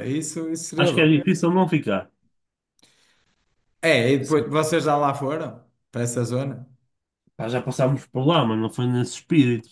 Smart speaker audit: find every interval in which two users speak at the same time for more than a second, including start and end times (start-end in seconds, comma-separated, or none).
none